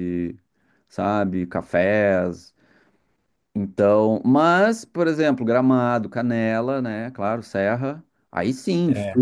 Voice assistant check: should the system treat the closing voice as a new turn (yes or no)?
no